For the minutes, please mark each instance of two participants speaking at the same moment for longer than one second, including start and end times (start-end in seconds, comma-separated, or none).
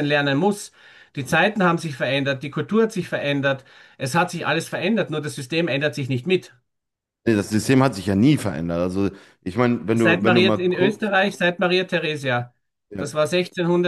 9.9-11.1